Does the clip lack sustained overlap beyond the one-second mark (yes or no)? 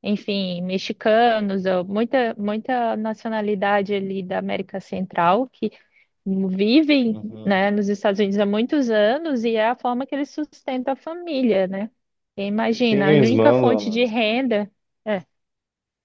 no